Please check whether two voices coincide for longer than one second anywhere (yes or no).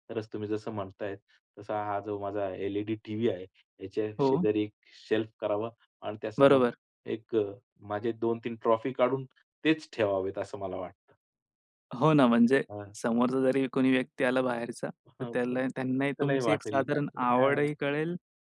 yes